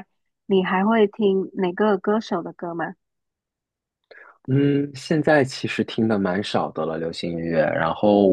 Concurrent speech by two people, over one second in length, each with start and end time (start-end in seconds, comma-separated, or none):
none